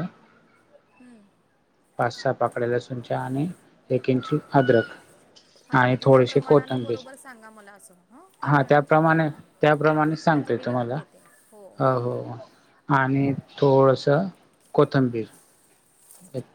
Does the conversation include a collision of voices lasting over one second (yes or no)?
yes